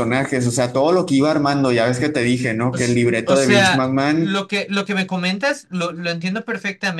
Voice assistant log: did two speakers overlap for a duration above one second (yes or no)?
yes